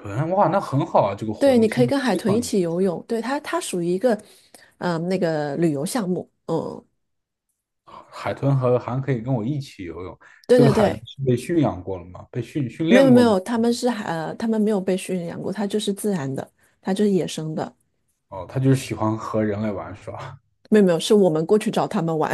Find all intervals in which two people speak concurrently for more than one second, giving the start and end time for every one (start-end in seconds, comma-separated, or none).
1.4-2.8